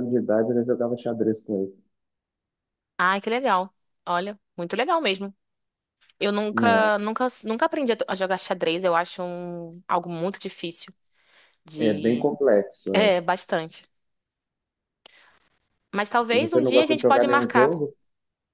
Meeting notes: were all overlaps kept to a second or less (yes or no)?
no